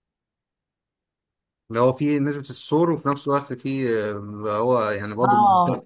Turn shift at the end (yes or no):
yes